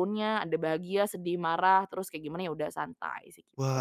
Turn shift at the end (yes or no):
yes